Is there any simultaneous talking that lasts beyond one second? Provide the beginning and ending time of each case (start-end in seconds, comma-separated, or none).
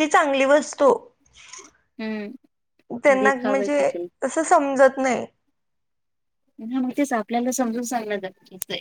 none